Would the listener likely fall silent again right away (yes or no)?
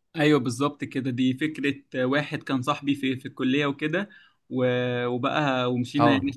yes